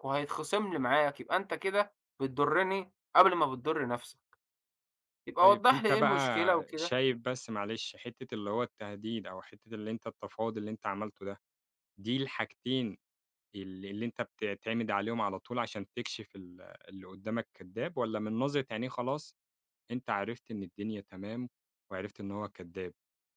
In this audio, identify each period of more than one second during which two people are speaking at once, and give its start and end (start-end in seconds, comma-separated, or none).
5.4-7.0